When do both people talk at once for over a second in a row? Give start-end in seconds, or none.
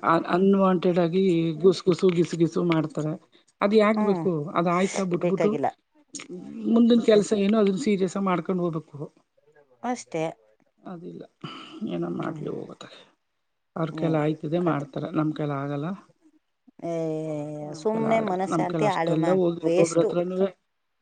17.8-20.1